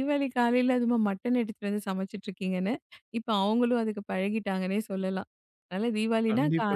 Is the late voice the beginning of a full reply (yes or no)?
yes